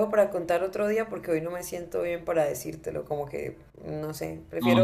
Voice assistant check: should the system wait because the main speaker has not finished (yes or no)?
yes